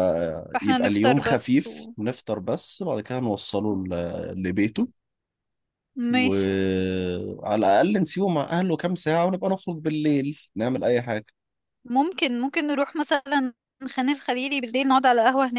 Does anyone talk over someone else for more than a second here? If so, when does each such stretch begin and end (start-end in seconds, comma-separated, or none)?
0.5-1.9